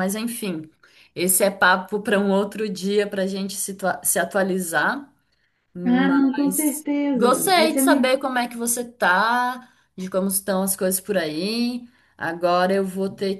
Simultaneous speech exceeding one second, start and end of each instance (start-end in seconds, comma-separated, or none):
5.8-8.1